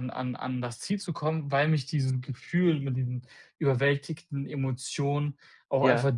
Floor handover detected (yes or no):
no